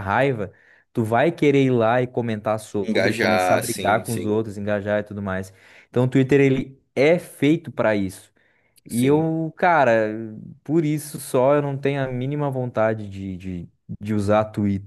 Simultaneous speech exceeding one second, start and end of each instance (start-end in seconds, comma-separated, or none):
2.8-4.4